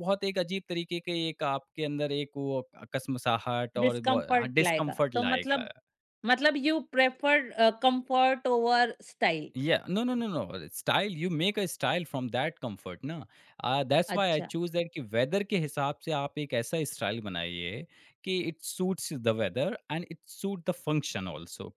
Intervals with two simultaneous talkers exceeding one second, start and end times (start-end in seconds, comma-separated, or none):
3.8-5.7